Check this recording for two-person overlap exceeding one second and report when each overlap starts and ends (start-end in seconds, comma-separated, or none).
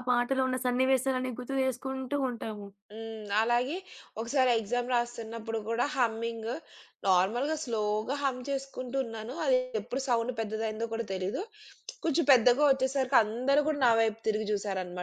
none